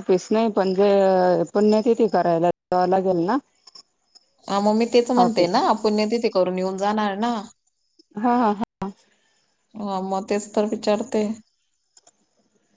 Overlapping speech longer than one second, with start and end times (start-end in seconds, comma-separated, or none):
none